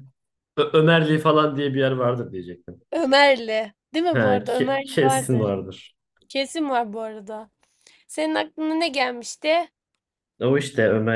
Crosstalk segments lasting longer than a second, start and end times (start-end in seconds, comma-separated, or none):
4.1-5.5